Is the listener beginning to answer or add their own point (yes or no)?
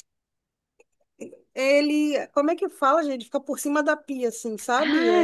yes